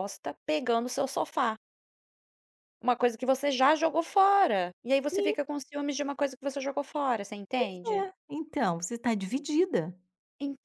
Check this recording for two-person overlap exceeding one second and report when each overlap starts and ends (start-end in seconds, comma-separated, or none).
none